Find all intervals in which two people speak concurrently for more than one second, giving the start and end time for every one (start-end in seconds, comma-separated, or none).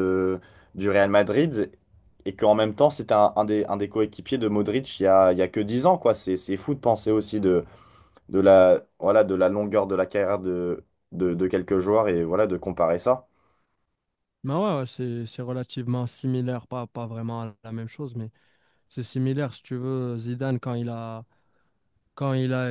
none